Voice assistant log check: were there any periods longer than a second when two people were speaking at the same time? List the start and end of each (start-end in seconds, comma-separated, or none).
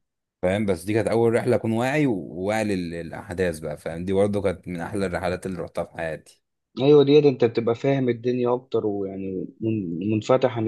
none